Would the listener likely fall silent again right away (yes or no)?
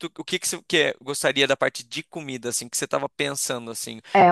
no